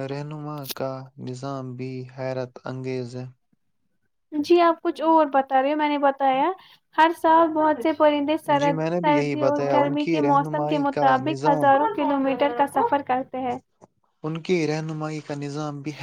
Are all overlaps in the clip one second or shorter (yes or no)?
no